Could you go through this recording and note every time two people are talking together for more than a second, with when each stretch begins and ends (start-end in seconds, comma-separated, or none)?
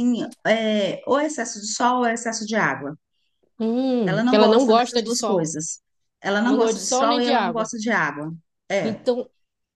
4.0-5.5, 6.4-7.7